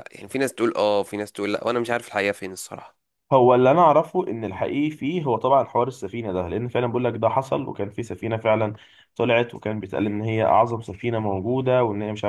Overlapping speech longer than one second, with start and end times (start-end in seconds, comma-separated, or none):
none